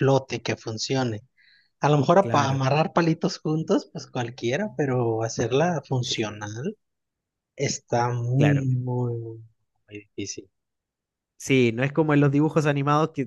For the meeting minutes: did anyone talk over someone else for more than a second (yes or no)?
no